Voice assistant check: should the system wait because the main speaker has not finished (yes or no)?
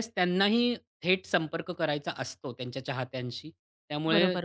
no